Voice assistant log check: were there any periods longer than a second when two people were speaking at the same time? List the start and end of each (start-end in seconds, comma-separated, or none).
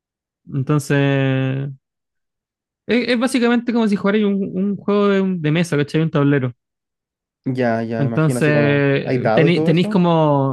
8.0-10.0